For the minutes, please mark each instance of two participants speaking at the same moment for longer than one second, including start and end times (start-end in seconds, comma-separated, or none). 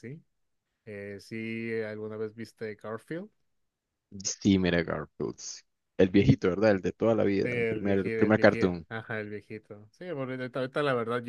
7.4-8.9